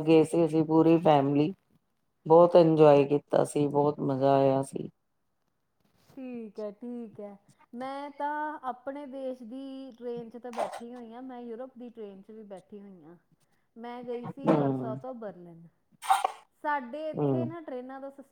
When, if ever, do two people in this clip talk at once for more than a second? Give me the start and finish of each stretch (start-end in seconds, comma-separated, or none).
none